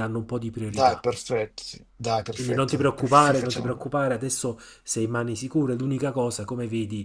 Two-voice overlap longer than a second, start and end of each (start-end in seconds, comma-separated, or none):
2.3-3.9